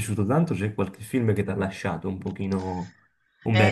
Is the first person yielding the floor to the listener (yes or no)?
yes